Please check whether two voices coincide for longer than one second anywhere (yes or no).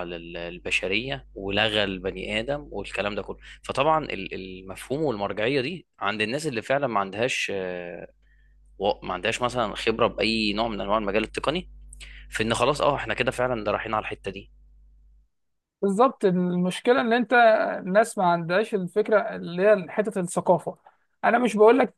no